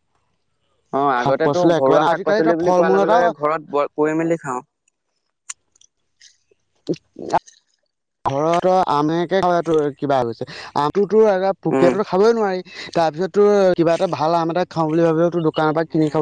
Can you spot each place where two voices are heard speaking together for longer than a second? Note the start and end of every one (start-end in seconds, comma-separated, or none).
1.2-3.2